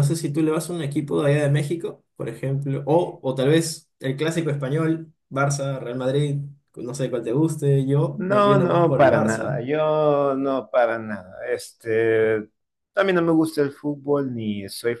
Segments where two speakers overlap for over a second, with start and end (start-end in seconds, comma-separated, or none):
8.1-9.6